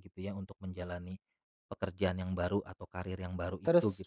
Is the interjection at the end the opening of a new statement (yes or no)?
yes